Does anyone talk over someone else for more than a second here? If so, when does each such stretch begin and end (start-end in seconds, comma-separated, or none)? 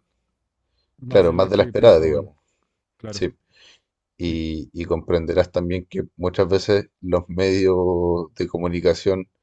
1.1-2.3